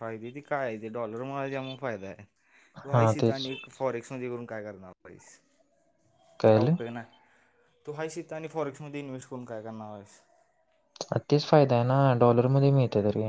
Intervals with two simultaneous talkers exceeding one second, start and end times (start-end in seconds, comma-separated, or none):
none